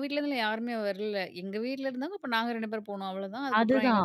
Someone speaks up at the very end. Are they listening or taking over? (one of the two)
taking over